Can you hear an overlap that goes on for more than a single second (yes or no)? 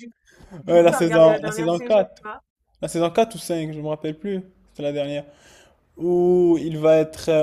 yes